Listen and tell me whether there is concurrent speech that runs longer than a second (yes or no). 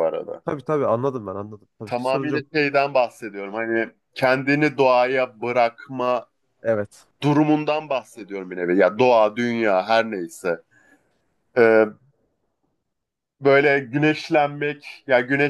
no